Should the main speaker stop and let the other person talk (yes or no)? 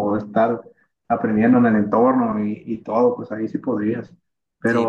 no